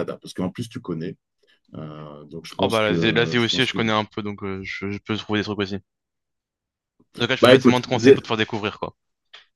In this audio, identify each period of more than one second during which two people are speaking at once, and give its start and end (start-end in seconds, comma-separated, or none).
2.6-3.8